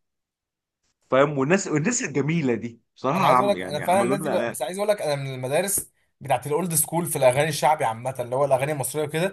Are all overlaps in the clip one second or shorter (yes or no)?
no